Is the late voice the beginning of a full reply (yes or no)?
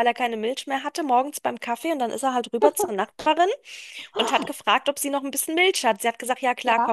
no